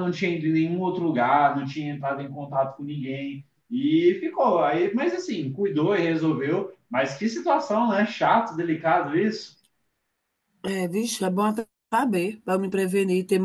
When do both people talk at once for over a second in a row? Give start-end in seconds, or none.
none